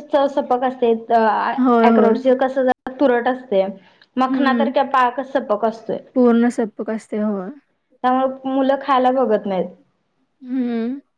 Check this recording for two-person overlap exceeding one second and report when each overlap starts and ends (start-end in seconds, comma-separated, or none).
none